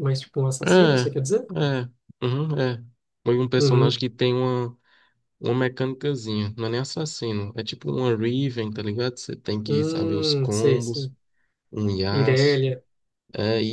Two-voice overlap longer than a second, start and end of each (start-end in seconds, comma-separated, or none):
9.7-11.1